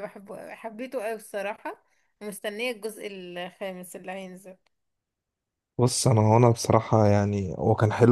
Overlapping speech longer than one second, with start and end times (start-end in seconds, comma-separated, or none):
none